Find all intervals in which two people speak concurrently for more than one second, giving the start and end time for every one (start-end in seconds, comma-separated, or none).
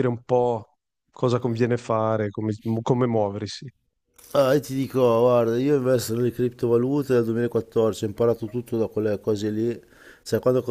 none